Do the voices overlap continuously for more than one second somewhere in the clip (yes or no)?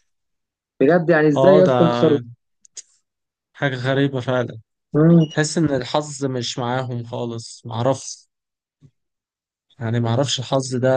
no